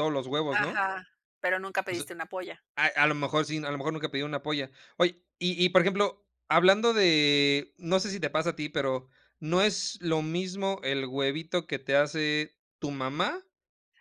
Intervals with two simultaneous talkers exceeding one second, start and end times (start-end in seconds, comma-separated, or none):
none